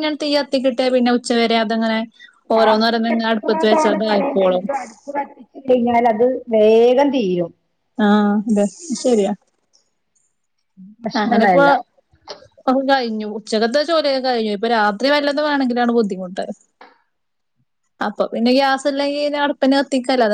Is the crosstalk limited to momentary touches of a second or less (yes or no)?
no